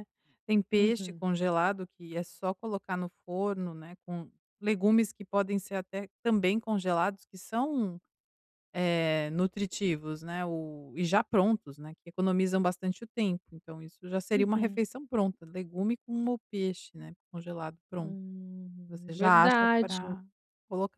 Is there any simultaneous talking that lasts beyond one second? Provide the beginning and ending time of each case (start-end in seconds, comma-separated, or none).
18.9-20.1